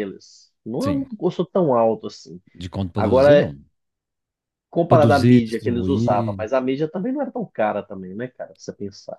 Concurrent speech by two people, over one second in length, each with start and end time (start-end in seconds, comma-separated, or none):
4.9-6.5